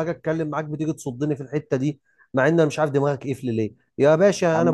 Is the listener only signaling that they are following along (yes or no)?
no